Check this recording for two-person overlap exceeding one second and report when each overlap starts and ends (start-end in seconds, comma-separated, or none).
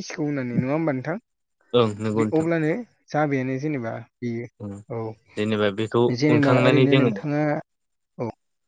5.3-7.1